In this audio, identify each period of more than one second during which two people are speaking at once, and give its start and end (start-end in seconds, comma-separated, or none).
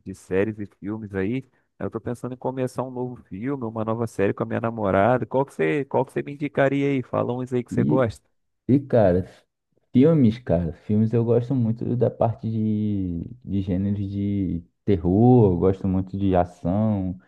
none